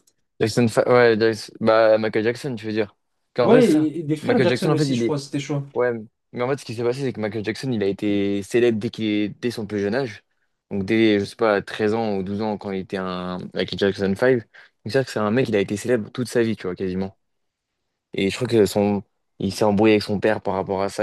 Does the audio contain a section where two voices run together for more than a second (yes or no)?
yes